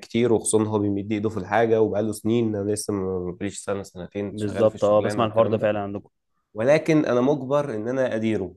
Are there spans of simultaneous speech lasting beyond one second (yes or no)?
yes